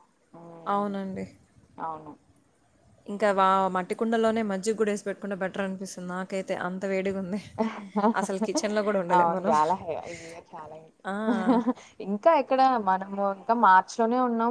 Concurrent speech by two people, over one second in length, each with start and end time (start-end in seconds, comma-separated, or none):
none